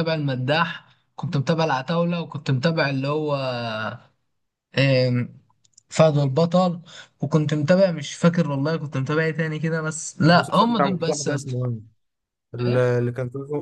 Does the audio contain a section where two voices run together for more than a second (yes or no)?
yes